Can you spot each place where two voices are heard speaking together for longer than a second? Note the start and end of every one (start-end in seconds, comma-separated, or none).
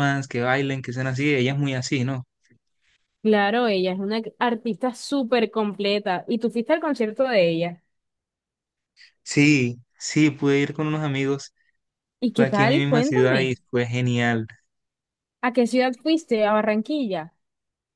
12.3-13.6